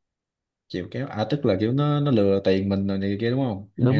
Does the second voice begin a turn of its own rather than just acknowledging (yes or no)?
yes